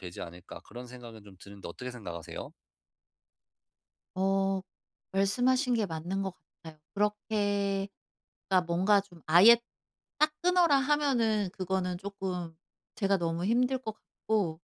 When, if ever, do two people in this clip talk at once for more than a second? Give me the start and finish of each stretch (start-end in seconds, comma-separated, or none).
none